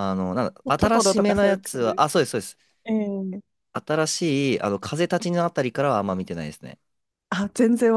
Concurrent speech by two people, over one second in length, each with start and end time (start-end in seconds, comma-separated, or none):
0.6-2.1